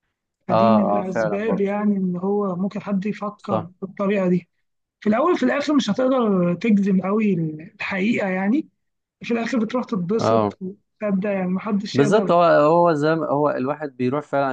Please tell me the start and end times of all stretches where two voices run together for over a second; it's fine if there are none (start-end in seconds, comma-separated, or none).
0.5-1.7